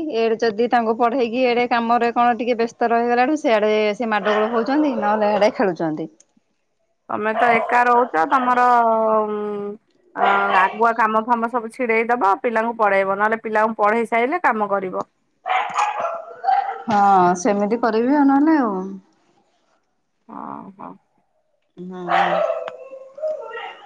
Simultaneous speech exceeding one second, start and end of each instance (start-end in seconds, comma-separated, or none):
none